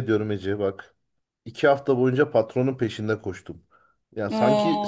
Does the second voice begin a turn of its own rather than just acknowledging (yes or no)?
no